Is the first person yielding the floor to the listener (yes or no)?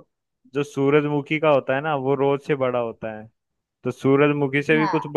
no